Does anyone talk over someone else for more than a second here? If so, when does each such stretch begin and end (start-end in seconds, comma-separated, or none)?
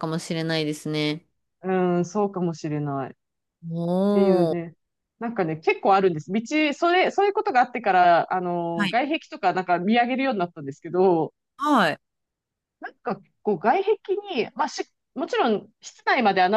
none